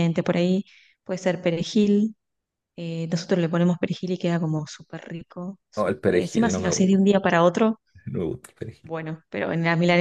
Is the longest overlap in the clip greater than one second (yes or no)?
yes